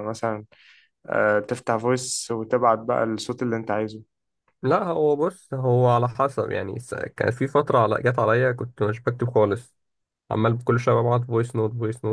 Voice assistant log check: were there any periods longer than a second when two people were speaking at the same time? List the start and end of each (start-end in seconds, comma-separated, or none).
none